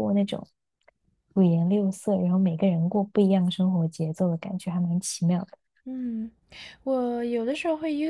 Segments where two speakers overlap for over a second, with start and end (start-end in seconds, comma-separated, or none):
none